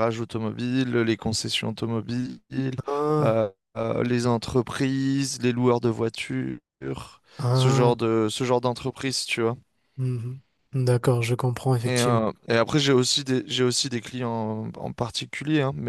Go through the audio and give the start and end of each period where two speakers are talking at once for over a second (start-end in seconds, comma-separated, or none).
none